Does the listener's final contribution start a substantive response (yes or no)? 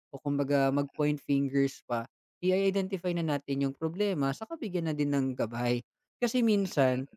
no